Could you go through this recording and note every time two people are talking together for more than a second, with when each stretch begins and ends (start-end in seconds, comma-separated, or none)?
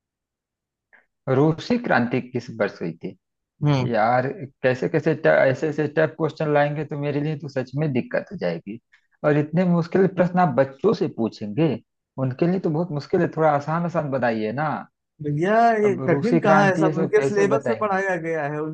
15.8-18.0